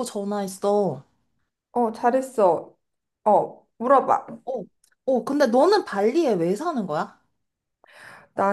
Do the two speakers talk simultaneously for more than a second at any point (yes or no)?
no